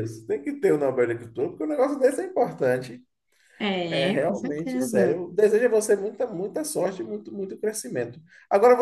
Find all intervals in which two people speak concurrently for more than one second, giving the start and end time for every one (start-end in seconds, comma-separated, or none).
3.9-5.2